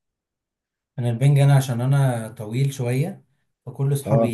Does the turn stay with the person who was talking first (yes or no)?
yes